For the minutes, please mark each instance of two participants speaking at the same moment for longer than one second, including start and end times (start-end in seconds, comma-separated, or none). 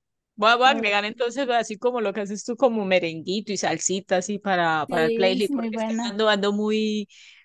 4.9-6.1